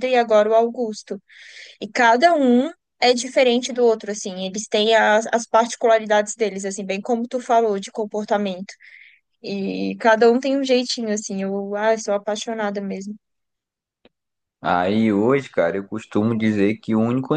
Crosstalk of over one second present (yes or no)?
no